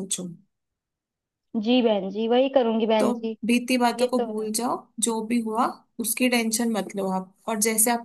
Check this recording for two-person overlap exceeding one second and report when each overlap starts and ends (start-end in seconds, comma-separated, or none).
none